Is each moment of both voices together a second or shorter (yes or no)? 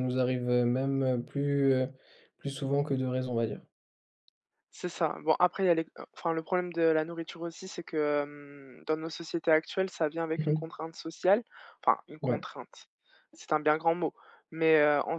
yes